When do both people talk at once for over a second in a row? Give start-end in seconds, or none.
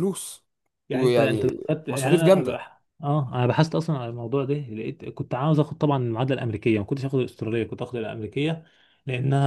0.9-2.5